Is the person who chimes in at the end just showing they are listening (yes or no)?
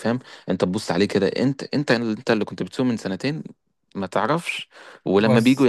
yes